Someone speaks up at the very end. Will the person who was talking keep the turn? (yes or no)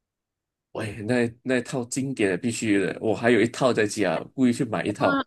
no